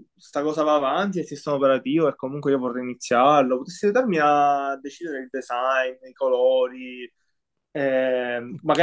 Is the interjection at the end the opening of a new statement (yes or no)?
no